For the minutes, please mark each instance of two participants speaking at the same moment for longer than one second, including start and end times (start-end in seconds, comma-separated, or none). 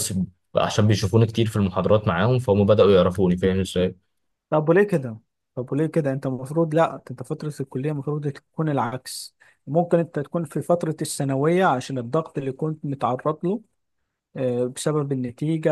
none